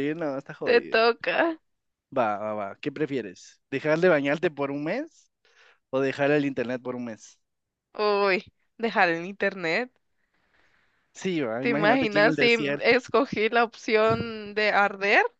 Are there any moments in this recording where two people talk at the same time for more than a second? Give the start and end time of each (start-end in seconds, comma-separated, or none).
11.6-12.9